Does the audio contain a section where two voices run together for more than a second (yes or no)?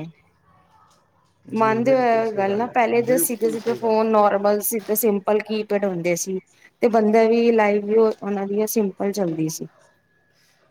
yes